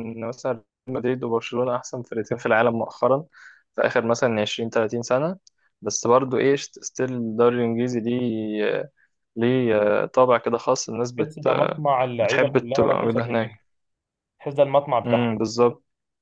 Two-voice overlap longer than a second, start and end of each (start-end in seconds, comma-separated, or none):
12.2-13.6